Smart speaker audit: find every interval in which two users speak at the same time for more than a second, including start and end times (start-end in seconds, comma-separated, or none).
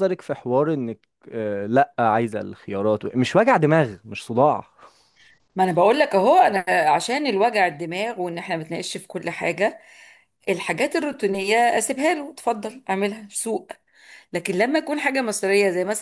none